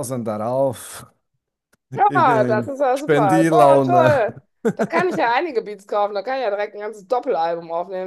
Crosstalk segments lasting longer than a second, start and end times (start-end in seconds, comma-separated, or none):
1.9-4.2